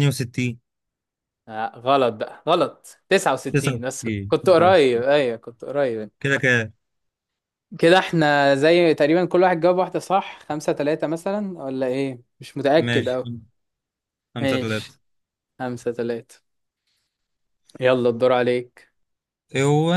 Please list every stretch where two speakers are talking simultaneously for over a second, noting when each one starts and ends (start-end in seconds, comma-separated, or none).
3.5-5.0